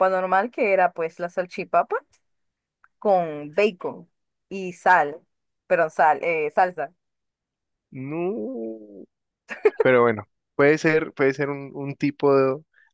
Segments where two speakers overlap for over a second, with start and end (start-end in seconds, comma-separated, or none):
none